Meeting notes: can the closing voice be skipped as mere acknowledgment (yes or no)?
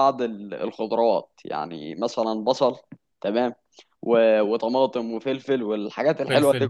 yes